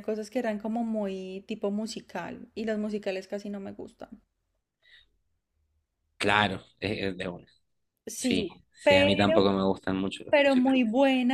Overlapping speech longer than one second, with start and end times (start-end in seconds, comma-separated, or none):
8.1-9.6